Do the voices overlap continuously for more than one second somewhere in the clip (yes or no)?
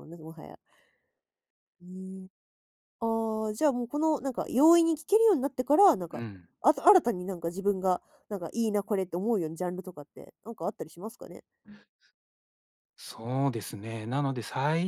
no